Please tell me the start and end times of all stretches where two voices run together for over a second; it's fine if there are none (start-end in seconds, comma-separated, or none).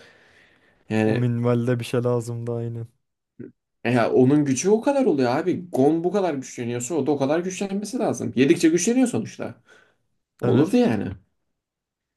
none